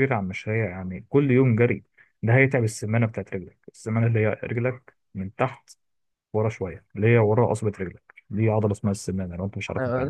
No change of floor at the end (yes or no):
no